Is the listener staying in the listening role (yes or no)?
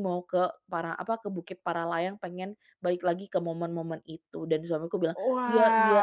no